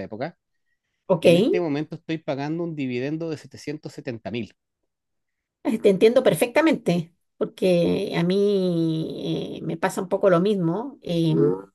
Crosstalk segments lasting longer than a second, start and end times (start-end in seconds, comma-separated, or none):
none